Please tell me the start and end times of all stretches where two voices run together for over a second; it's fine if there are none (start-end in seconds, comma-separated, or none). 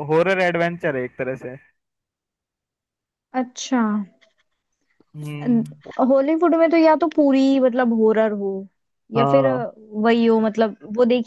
none